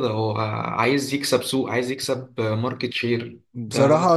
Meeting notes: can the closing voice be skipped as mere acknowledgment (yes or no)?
no